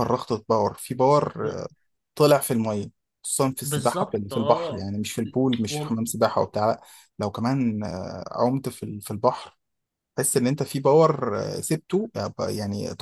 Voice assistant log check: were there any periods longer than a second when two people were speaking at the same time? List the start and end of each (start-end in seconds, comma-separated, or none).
3.6-4.9